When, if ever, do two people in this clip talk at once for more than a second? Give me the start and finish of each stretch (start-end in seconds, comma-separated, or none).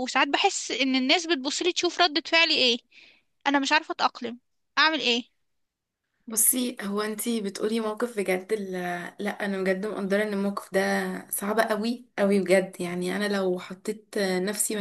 none